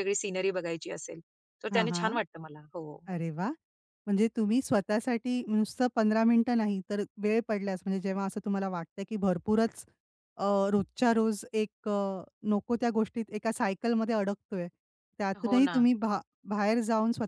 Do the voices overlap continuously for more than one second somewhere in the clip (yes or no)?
no